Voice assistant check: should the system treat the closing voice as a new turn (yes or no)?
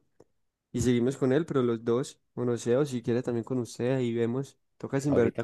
yes